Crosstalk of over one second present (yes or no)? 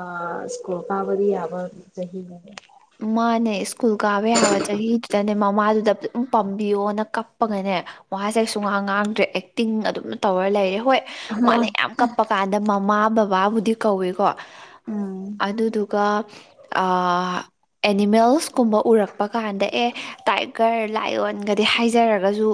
no